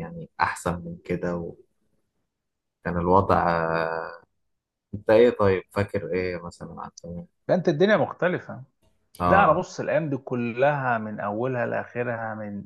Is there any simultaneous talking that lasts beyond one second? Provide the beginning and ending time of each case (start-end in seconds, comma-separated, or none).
none